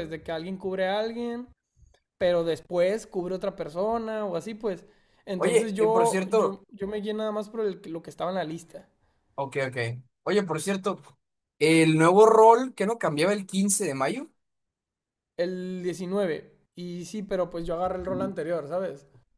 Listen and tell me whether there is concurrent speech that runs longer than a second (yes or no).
yes